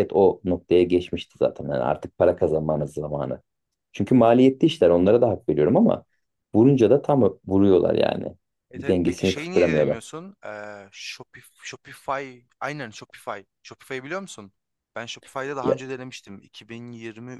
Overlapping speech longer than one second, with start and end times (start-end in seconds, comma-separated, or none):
8.8-10.0